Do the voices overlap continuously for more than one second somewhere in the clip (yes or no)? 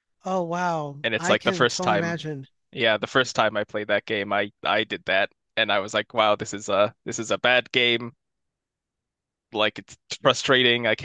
yes